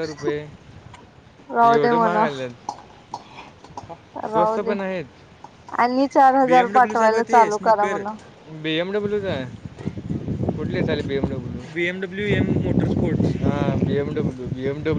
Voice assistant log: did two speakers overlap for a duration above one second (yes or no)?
yes